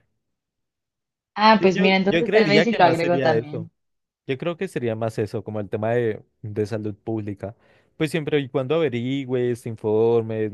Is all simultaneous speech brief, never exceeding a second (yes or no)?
no